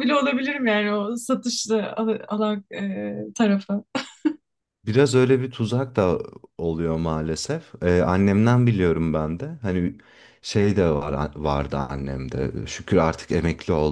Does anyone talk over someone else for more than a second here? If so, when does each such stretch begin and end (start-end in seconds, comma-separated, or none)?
none